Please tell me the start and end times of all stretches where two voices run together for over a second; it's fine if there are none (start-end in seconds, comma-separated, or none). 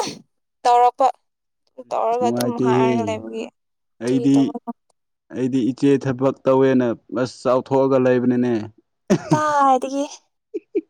1.9-3.2